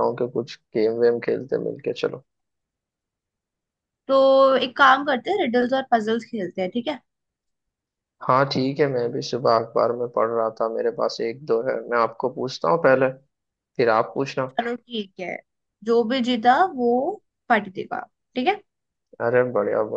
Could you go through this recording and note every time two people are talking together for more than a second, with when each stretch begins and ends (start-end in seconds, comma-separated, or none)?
none